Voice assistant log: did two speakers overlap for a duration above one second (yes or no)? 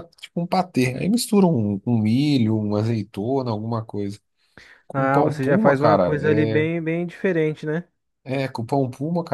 yes